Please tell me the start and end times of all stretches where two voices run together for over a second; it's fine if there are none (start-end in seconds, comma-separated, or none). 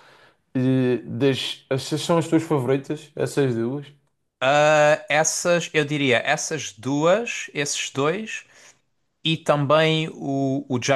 none